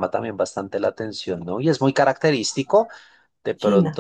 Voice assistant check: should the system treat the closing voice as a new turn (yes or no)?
no